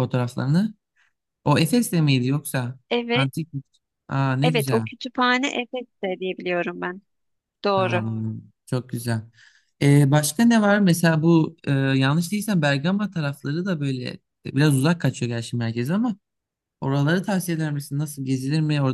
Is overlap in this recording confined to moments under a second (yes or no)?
yes